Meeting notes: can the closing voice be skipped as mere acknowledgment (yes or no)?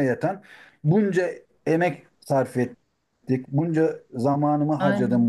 yes